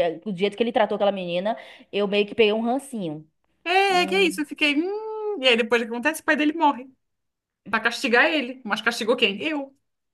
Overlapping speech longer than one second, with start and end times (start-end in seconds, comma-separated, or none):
none